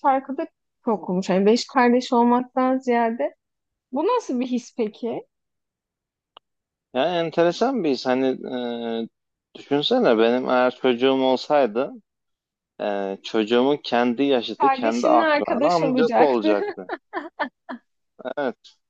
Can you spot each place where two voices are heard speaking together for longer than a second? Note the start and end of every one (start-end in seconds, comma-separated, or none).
14.6-16.6